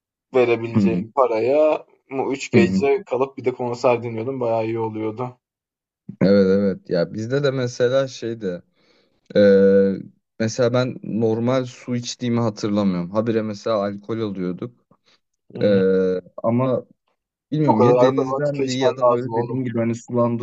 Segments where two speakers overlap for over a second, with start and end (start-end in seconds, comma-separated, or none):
17.7-19.6